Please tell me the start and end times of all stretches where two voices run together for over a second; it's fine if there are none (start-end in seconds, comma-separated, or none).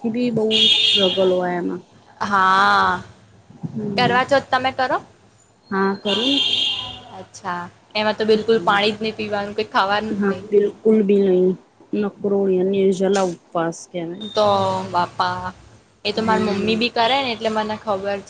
none